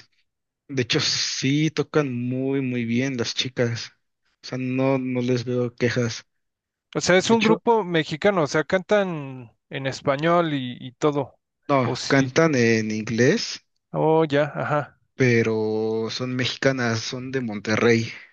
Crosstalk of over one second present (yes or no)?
no